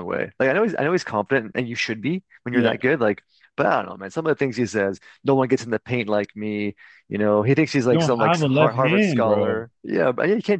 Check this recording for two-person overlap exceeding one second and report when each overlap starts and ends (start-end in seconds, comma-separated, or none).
7.9-9.6